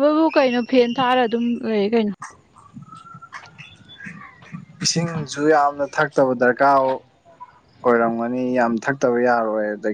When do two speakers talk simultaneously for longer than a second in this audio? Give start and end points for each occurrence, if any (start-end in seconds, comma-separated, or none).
none